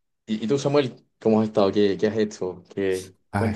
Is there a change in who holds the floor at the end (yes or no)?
yes